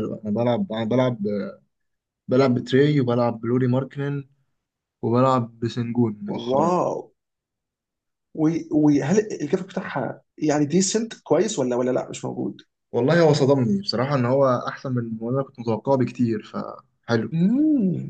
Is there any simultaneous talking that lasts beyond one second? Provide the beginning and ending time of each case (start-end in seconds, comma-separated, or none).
none